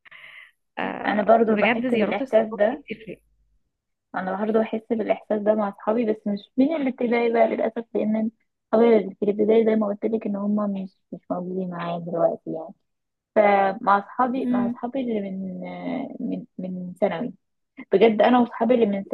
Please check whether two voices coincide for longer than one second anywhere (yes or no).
yes